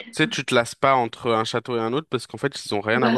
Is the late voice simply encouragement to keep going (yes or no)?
yes